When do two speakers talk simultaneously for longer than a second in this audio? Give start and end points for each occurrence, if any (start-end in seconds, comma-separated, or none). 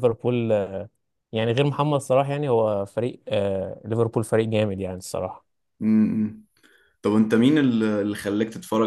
none